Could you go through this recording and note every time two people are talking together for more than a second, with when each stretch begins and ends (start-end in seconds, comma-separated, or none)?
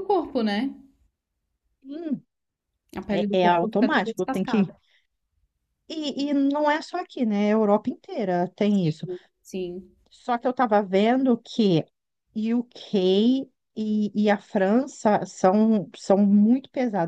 3.1-4.7